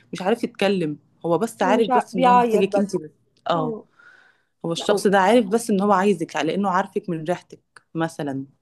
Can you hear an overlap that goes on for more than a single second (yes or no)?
yes